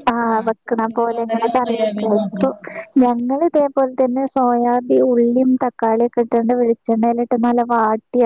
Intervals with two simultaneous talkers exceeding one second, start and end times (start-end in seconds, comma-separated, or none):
0.6-2.5